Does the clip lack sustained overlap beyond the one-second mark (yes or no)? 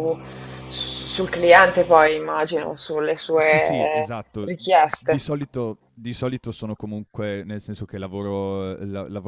no